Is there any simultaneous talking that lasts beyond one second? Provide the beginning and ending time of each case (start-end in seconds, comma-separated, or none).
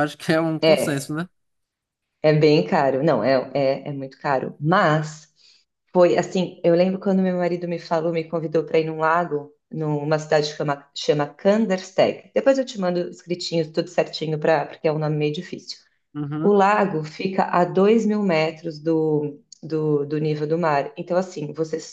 none